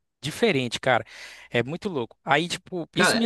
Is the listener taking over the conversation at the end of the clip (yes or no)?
no